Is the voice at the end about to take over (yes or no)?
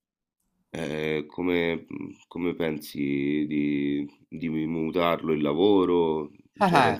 yes